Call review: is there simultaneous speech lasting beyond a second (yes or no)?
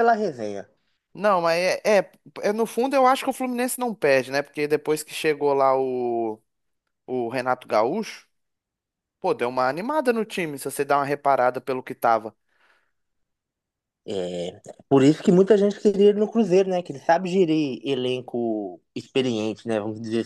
no